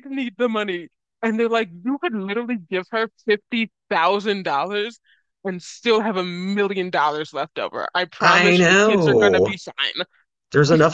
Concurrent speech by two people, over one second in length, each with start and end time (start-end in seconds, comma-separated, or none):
8.2-9.6